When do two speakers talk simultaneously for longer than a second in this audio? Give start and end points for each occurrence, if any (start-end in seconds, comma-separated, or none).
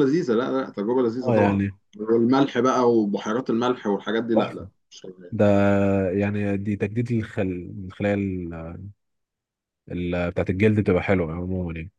none